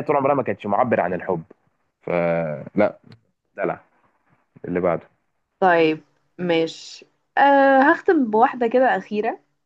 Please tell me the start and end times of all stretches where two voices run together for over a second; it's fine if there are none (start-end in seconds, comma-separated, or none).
none